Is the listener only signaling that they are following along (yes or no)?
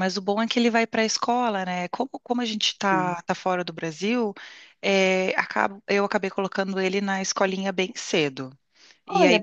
no